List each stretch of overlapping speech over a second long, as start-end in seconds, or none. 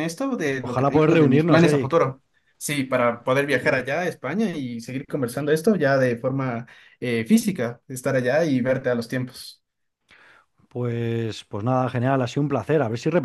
0.6-2.0